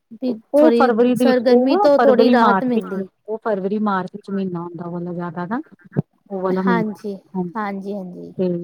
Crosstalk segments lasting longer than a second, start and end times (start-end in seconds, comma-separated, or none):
0.6-3.0